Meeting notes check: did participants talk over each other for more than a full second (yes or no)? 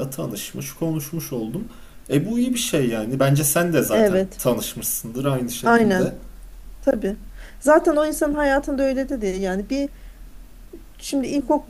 no